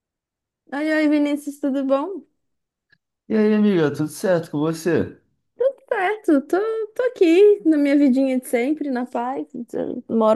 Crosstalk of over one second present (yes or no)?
no